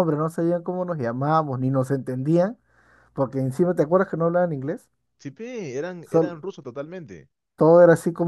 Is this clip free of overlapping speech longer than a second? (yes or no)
yes